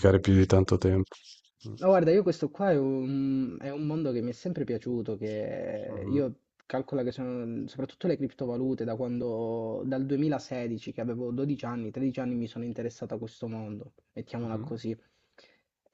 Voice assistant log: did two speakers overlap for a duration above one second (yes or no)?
no